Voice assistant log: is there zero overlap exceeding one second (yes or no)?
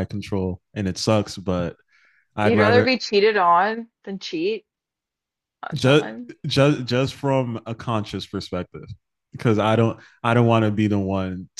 yes